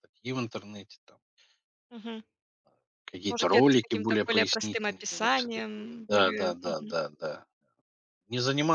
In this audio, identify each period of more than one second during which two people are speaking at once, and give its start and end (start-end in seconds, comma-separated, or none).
3.2-6.9